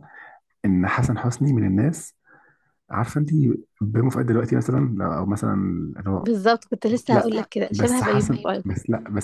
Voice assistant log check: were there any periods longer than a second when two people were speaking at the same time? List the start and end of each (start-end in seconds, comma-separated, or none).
7.1-8.7